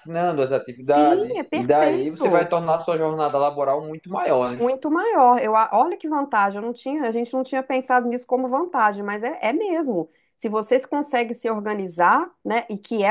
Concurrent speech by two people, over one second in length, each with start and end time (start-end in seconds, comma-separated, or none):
0.8-2.5